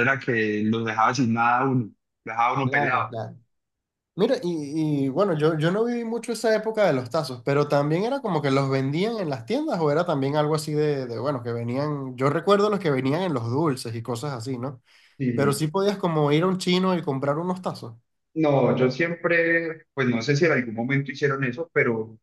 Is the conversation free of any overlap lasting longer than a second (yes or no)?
yes